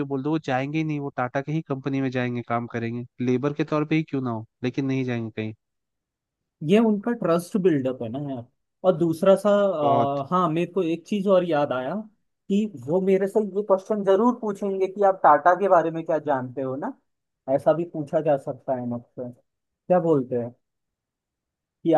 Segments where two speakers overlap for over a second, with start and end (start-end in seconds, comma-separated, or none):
none